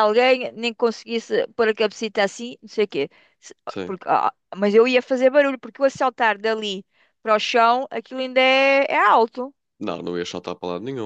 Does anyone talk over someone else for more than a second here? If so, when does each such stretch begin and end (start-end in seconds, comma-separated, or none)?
none